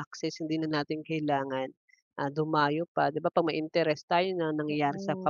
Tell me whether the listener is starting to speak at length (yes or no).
no